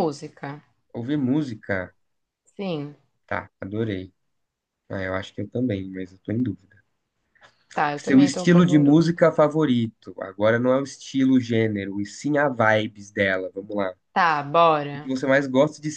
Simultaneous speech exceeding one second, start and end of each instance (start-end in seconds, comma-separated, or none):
8.0-9.2